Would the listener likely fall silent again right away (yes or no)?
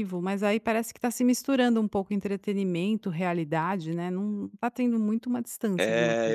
no